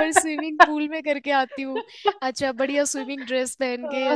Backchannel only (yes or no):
yes